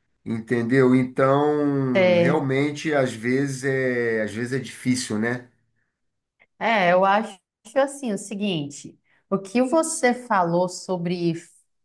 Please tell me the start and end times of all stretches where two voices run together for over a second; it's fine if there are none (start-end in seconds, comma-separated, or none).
none